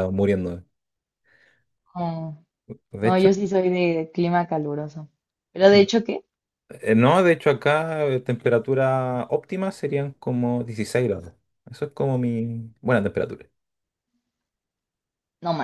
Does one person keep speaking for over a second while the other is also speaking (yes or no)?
no